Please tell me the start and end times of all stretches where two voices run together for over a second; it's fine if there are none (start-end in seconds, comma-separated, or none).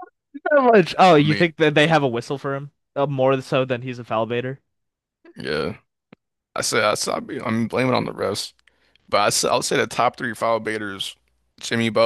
none